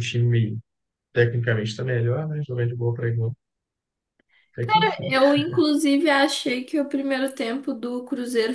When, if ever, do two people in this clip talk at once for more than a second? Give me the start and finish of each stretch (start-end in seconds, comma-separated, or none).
none